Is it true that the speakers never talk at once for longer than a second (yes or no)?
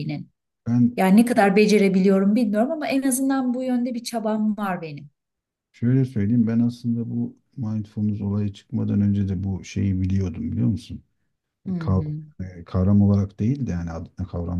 yes